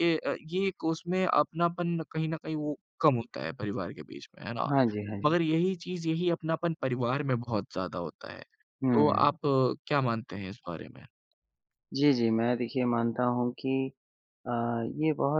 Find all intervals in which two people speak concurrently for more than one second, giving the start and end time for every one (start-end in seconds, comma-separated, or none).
none